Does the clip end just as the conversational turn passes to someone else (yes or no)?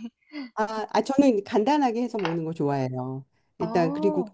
no